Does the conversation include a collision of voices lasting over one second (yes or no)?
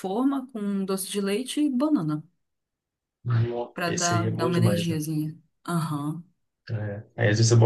yes